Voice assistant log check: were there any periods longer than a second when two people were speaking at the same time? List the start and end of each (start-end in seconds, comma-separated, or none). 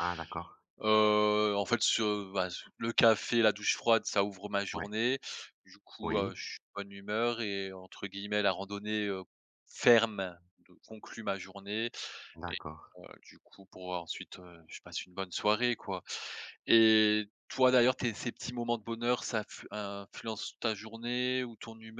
none